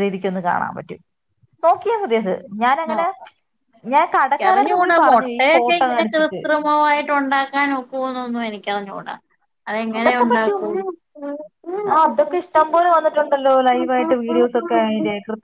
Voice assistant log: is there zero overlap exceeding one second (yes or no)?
no